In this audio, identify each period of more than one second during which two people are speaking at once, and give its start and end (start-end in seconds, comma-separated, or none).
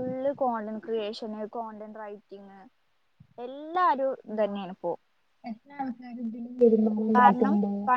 none